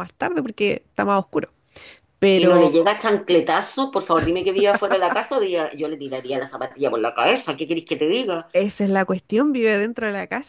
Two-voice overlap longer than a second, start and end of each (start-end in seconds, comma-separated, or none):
none